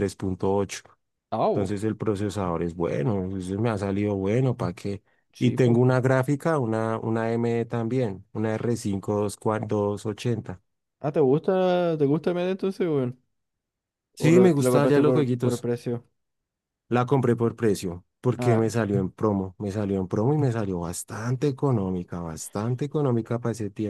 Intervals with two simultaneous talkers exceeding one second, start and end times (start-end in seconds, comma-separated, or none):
14.2-15.6